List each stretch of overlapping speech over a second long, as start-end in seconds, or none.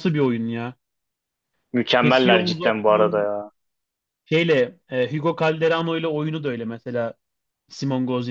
2.0-3.3